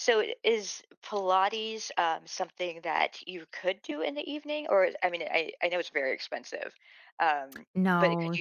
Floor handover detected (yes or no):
yes